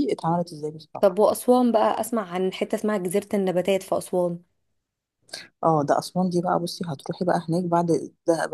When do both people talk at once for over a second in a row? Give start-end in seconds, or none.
none